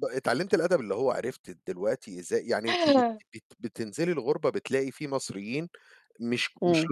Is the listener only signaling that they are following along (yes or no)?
yes